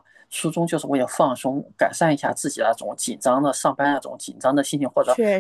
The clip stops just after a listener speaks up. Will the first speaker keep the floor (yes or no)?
yes